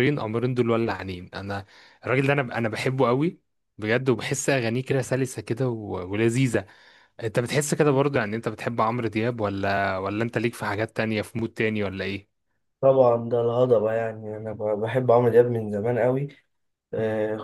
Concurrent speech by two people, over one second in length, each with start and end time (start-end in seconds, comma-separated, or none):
none